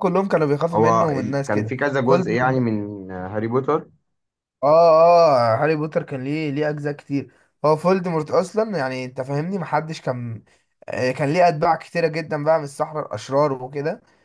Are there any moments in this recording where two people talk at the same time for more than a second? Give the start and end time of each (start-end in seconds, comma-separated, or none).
0.7-2.2